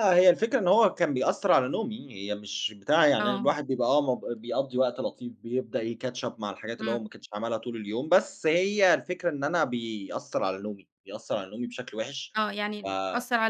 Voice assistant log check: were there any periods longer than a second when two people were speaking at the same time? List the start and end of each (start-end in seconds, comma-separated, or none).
none